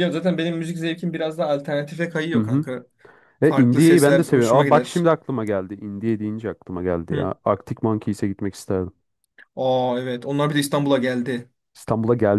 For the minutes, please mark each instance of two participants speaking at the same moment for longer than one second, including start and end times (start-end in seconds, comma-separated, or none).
3.4-5.1